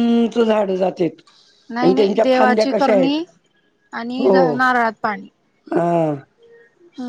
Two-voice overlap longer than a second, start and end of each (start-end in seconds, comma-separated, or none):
1.8-3.2